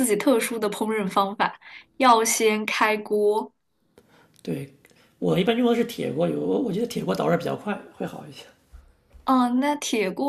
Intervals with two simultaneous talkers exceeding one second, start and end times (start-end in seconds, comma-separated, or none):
none